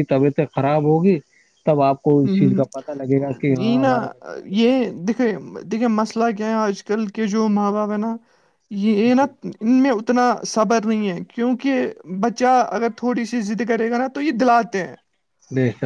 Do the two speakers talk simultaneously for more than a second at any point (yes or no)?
no